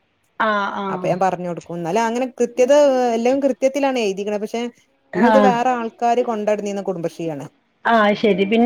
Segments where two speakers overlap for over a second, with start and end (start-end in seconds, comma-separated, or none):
none